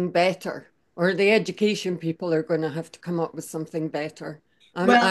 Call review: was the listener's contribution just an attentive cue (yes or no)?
yes